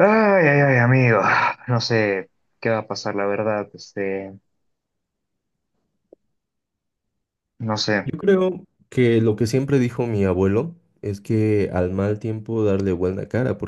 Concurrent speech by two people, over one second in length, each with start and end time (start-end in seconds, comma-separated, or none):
none